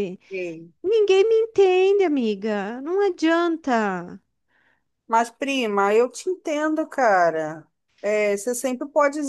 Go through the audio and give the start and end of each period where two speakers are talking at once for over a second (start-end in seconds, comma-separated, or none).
none